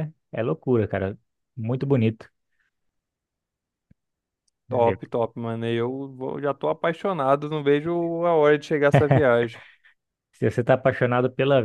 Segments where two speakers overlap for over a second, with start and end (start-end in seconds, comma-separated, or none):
none